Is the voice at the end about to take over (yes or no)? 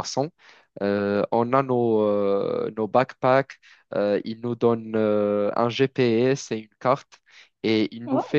no